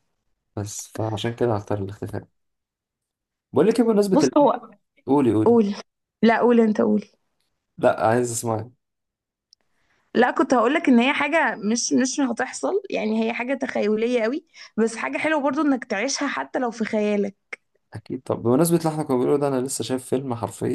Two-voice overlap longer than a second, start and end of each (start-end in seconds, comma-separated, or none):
none